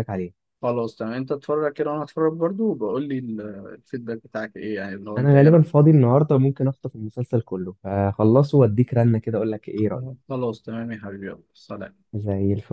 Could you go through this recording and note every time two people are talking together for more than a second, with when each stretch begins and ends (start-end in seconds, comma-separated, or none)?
none